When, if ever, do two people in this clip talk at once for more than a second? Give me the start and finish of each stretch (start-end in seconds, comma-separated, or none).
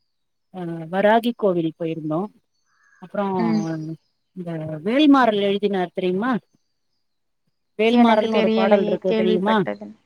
8.0-9.6